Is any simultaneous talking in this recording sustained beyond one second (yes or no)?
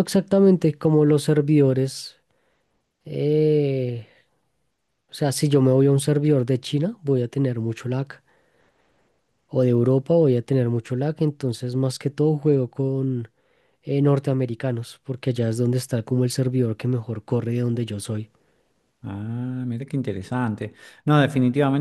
no